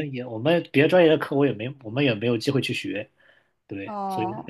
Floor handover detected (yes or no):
no